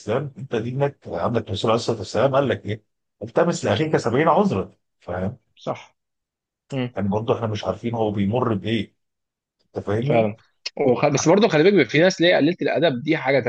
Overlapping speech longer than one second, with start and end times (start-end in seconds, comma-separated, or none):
none